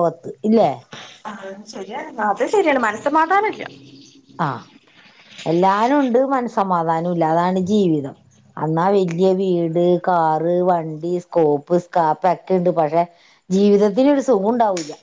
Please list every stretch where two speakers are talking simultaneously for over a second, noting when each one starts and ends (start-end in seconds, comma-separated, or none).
none